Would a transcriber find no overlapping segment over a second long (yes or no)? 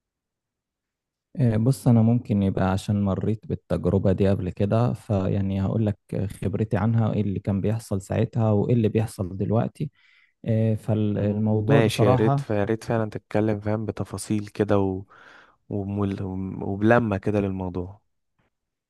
no